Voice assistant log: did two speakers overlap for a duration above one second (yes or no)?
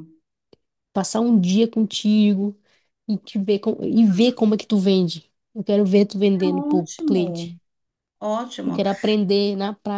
yes